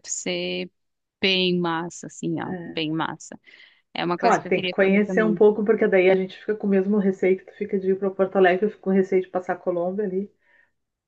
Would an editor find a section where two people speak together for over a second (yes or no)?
yes